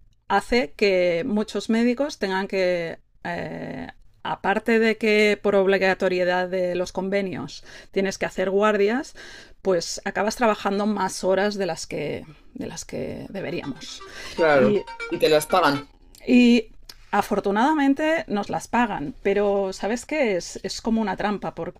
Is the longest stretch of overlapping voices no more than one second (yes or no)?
yes